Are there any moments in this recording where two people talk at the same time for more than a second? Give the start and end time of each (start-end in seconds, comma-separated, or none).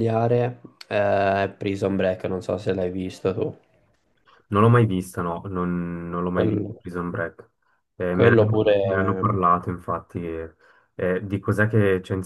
8.1-9.4